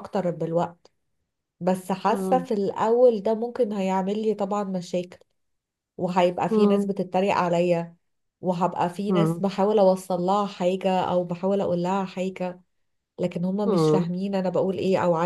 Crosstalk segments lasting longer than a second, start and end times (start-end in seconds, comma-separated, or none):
none